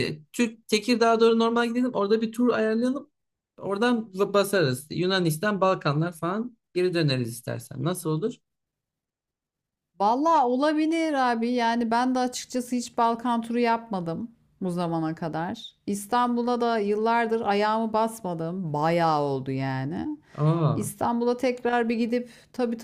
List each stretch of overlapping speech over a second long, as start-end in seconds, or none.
none